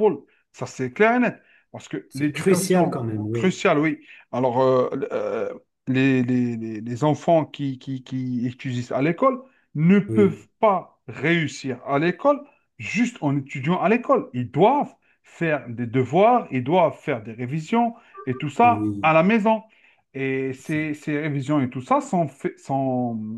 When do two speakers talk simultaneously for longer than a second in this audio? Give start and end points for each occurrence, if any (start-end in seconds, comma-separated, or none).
2.1-3.5